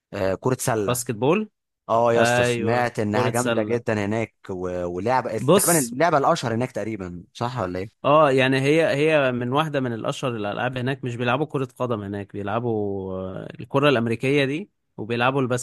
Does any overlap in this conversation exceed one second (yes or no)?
yes